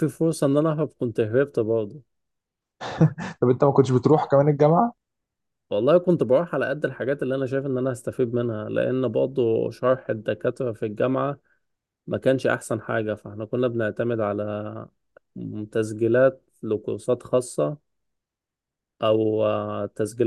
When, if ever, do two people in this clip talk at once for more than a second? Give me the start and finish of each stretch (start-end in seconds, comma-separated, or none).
none